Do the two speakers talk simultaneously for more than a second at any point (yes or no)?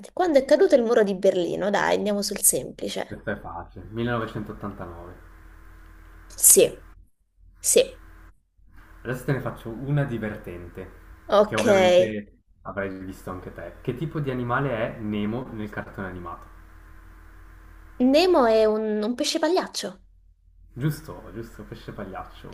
no